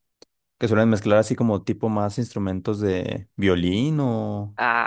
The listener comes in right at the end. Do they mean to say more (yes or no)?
yes